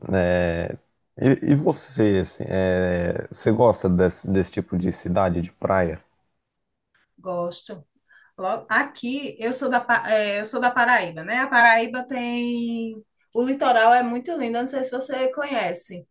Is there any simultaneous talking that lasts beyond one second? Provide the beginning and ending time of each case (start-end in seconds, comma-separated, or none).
none